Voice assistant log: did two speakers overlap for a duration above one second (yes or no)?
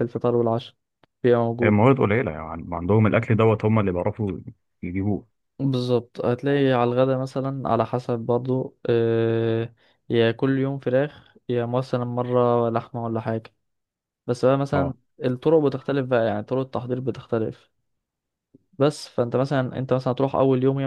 no